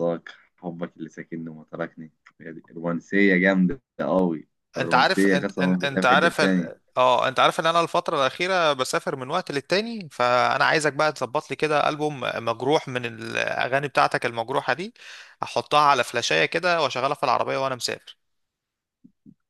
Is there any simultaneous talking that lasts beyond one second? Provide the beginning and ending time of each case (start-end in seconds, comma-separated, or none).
4.8-6.7